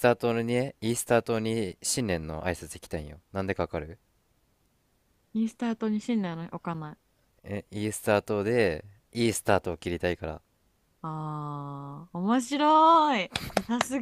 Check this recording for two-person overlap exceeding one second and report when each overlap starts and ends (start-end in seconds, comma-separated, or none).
none